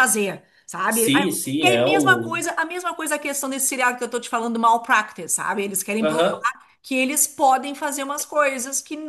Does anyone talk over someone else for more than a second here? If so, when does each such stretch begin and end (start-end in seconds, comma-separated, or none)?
0.9-2.4